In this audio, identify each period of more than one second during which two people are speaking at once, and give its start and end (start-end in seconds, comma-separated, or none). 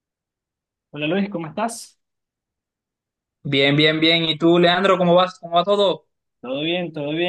none